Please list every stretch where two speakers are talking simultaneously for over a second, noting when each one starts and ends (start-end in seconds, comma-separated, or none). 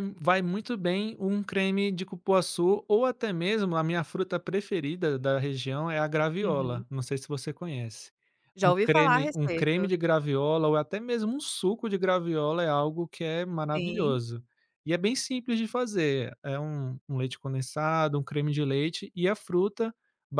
8.6-9.9